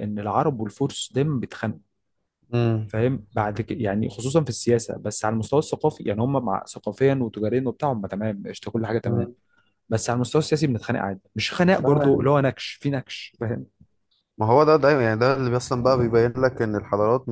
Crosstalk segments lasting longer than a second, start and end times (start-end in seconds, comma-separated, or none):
none